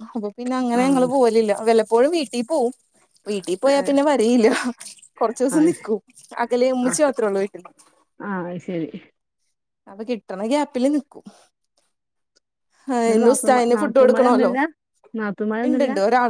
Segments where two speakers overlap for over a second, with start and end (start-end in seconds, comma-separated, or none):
13.1-14.5